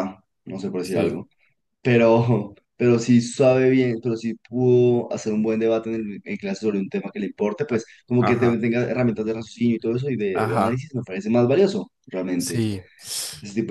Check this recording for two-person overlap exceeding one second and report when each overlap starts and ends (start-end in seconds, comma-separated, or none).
none